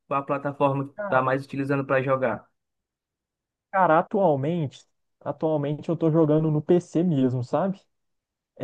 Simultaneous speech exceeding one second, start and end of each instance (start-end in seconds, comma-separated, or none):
none